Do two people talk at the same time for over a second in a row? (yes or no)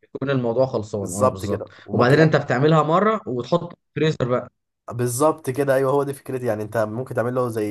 yes